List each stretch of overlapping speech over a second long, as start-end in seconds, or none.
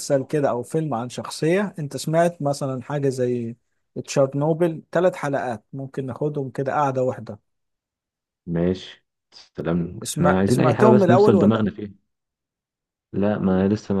10.0-11.7